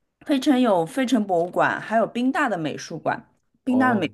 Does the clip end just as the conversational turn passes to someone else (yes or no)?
no